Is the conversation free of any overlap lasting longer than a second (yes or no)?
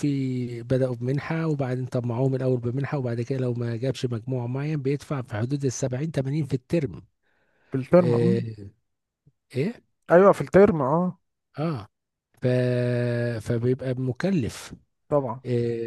yes